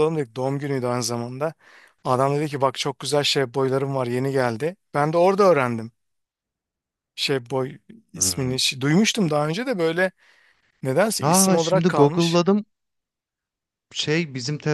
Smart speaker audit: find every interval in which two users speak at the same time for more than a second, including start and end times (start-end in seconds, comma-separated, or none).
11.2-12.4